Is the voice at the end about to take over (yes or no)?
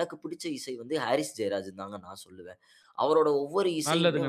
yes